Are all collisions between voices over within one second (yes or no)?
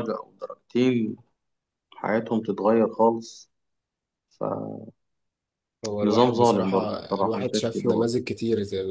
no